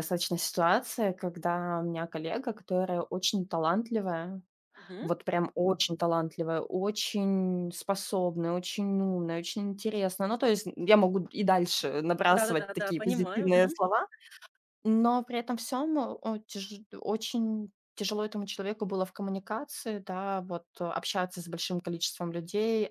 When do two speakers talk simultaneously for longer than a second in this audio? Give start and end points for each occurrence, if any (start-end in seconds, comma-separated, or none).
12.3-13.8